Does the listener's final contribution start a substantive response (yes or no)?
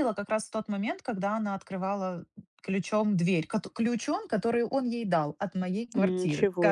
yes